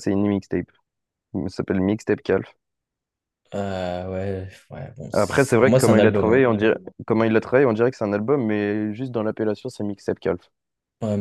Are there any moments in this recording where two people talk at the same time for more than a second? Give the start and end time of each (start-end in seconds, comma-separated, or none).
5.1-6.5